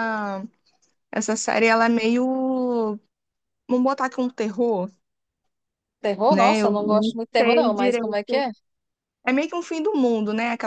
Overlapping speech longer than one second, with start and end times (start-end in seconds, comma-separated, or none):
6.3-8.4